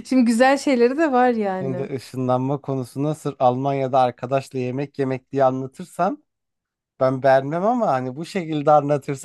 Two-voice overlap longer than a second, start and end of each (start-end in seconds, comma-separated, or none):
none